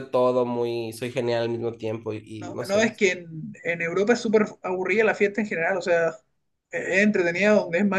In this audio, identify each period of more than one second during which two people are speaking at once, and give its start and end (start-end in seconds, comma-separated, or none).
none